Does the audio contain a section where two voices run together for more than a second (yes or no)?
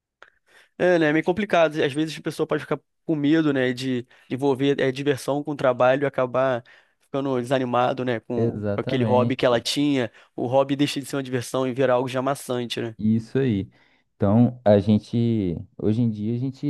yes